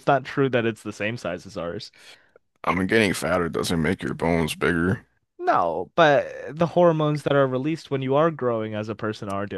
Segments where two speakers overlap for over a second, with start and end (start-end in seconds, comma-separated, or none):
none